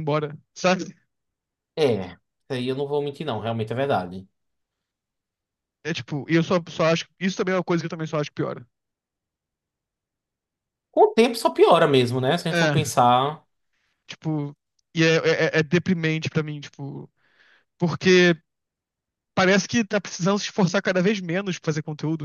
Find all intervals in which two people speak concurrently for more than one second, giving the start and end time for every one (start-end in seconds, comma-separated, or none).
none